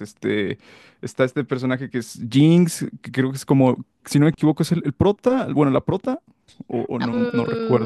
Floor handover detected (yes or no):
yes